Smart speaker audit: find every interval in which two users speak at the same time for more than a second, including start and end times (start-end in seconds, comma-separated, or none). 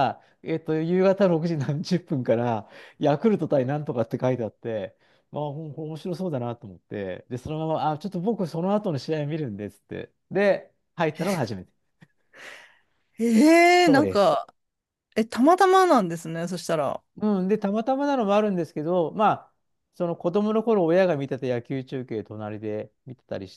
none